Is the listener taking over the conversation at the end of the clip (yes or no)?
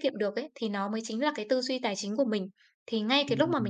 no